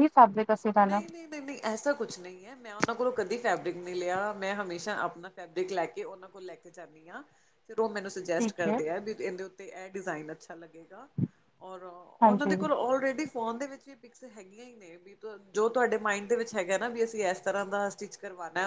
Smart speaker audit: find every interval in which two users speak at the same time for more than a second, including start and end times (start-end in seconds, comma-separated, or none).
none